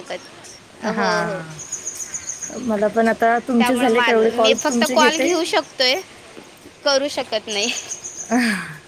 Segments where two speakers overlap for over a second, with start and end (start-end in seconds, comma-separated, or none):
3.6-5.2